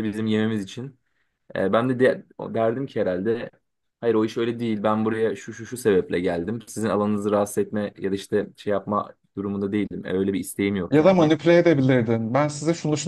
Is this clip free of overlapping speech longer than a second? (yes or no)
yes